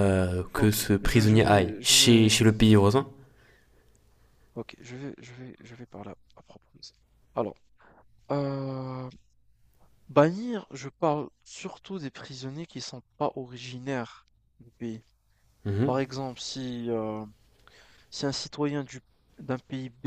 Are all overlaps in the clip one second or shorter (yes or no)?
no